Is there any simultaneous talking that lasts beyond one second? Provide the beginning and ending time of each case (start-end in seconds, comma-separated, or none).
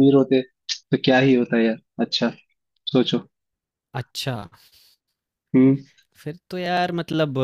none